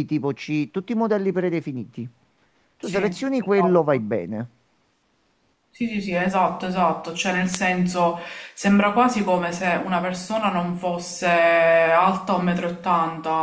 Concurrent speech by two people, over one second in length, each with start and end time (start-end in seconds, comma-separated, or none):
2.8-4.2